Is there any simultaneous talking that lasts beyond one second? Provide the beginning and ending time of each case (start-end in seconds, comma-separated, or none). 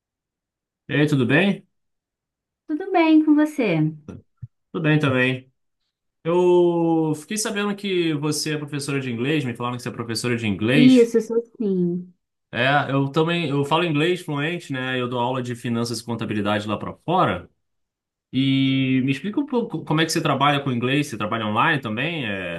none